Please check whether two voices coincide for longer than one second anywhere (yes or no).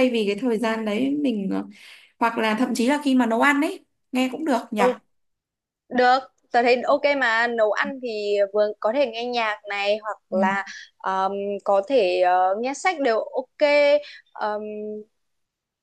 no